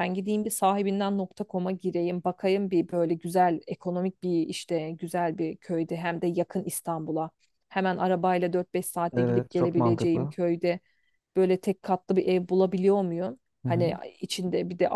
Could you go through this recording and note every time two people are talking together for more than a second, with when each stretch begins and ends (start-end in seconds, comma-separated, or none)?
9.1-10.3